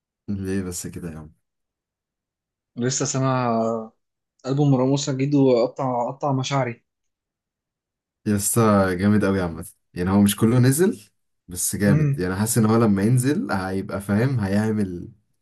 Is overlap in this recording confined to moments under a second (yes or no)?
yes